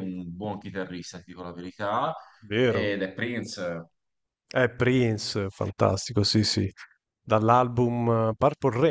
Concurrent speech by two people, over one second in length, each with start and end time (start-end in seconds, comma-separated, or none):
none